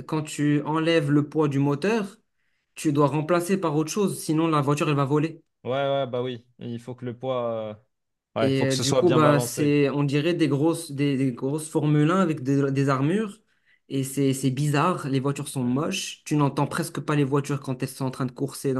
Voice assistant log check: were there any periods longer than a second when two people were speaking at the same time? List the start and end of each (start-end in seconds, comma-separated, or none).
8.4-9.7